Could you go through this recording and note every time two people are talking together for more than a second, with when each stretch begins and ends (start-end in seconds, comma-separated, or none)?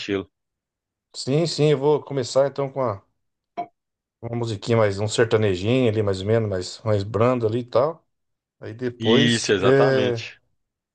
9.0-10.2